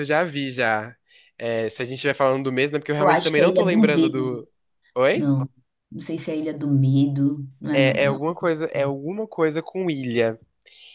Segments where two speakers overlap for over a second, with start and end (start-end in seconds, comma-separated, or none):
3.0-4.4